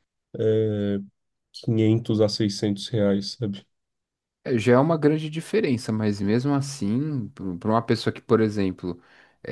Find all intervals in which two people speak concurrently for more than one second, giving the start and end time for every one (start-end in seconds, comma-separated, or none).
none